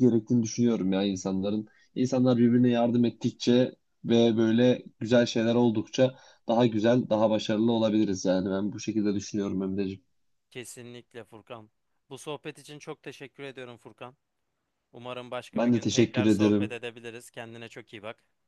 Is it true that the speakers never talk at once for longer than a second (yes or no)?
no